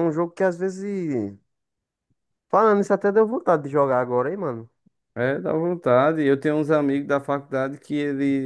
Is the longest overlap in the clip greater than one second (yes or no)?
no